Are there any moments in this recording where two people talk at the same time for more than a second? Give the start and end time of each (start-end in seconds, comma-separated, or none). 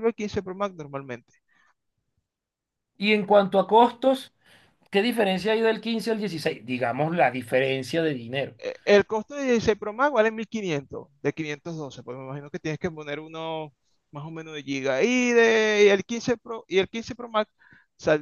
none